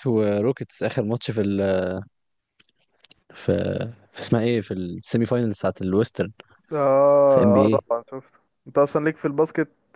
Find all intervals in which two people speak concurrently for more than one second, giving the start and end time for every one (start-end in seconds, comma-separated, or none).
none